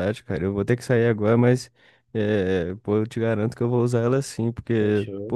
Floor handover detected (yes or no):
no